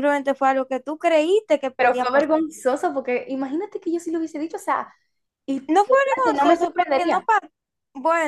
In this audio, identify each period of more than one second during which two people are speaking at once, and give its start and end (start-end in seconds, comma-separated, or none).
5.7-7.2